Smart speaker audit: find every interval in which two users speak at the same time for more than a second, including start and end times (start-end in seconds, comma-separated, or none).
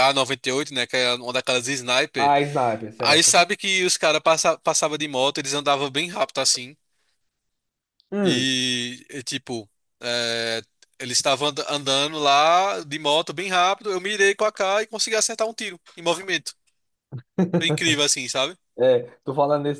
none